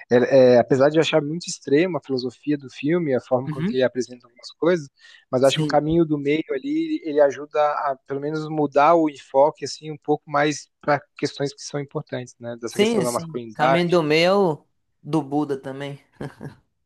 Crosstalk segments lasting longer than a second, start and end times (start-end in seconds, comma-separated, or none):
12.7-14.0